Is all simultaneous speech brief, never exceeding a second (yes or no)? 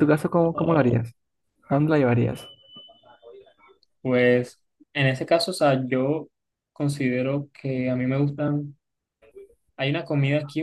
yes